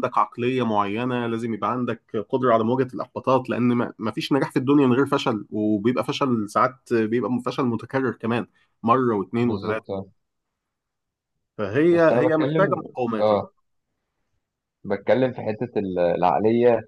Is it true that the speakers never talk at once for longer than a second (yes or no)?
no